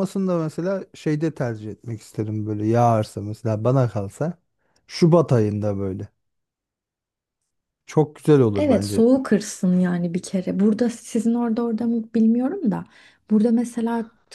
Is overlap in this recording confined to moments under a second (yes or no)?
yes